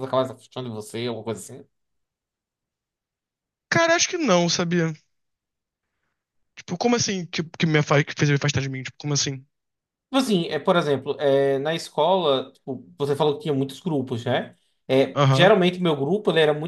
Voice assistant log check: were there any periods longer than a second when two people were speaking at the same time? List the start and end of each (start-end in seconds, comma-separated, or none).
none